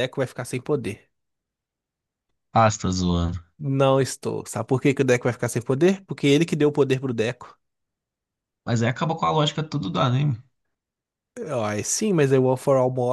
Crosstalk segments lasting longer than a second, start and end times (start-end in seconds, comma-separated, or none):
none